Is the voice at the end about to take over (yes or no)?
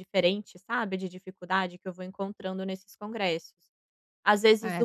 no